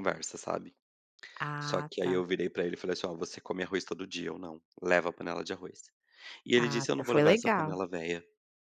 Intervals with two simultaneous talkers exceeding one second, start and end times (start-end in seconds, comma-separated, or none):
6.6-7.8